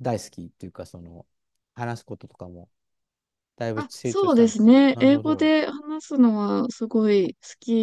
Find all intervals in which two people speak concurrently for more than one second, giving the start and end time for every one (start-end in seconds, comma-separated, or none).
3.7-5.5